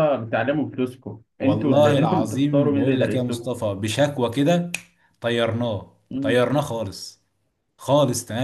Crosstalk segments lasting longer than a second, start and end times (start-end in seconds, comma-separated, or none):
1.4-3.5